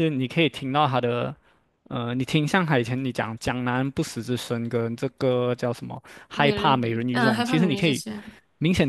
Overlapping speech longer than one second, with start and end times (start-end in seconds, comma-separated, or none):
6.3-8.0